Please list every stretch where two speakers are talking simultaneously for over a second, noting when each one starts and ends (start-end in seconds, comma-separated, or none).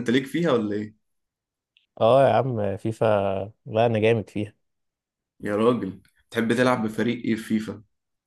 none